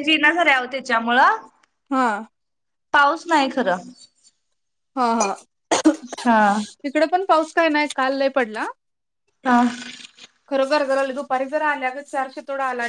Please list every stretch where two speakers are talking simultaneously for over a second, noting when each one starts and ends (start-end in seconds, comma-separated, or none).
none